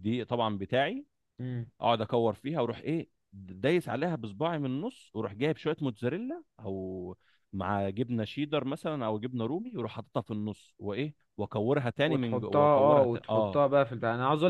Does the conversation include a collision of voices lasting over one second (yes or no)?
yes